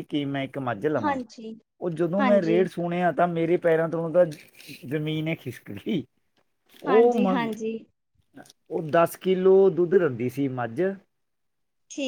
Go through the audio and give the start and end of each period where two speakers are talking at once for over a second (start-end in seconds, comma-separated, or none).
none